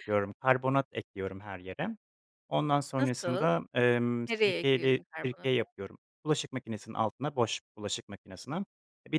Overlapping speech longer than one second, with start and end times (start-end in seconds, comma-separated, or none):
4.3-5.6